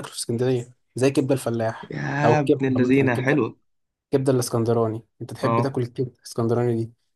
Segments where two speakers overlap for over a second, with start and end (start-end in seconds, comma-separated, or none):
1.9-3.5